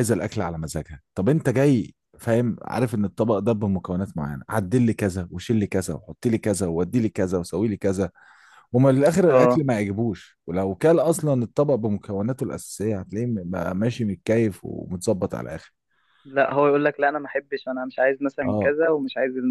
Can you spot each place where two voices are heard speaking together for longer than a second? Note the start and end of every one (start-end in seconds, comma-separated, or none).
none